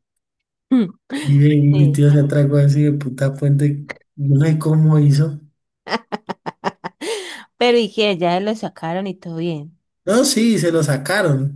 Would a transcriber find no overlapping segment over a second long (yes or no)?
yes